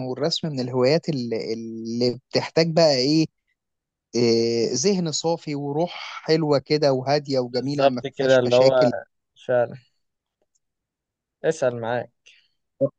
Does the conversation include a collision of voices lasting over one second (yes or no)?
yes